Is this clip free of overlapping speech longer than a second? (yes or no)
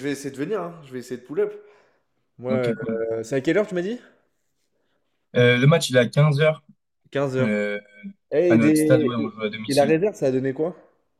no